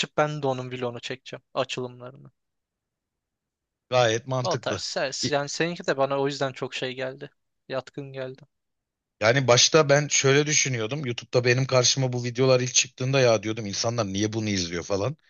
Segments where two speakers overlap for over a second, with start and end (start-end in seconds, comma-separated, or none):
none